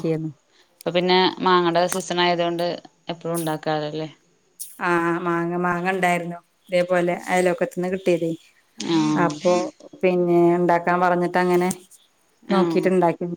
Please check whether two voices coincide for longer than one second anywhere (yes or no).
no